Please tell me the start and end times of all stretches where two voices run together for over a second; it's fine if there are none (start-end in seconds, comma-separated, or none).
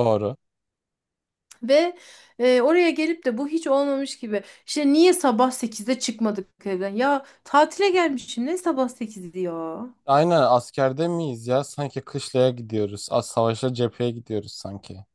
none